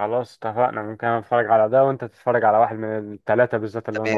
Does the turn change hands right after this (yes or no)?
yes